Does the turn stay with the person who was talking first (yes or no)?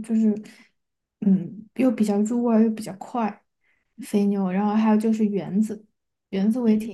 yes